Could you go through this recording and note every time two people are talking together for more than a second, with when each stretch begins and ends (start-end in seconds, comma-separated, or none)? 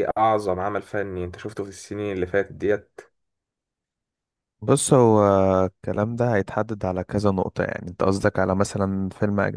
none